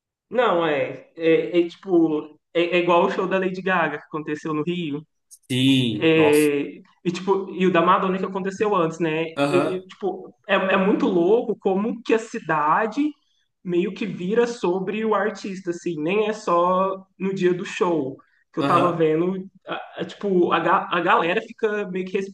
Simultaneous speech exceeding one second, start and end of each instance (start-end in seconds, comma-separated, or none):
none